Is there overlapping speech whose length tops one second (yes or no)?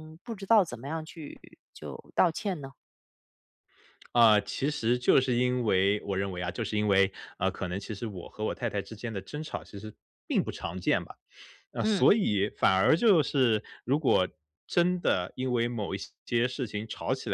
no